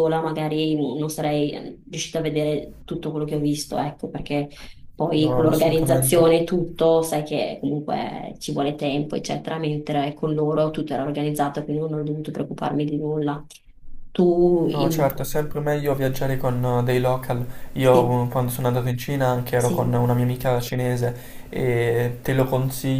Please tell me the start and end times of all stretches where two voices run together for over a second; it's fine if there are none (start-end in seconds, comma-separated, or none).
5.1-6.3